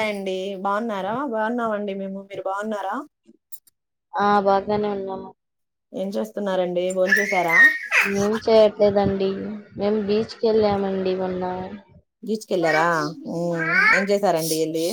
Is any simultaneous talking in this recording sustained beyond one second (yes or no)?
no